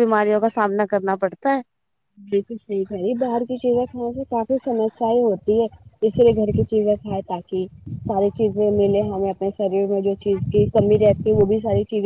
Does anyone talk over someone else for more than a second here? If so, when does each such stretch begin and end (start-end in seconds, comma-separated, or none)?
none